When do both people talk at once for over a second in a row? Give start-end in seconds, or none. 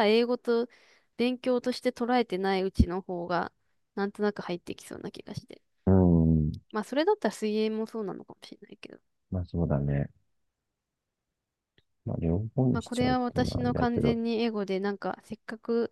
12.7-14.2